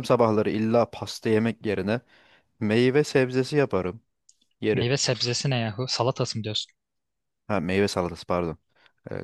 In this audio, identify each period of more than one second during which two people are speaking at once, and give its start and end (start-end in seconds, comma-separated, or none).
none